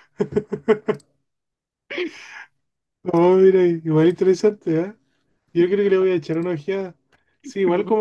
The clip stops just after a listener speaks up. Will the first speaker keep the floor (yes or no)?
yes